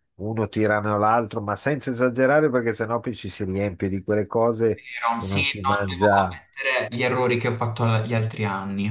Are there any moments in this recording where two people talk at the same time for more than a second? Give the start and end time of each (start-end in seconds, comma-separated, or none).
4.6-6.4